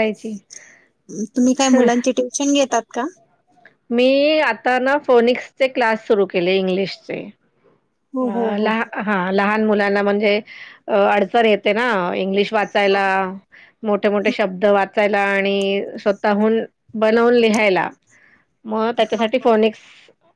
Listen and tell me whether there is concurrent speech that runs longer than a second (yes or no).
no